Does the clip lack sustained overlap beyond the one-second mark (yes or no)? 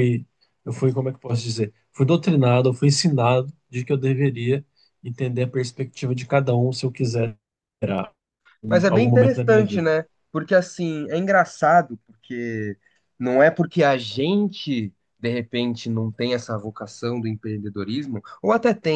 no